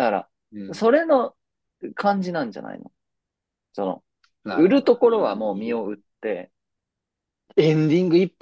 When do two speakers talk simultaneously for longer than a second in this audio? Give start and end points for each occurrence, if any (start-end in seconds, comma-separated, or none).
4.5-5.8